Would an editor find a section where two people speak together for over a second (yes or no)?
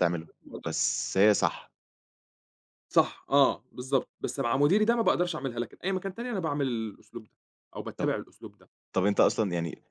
no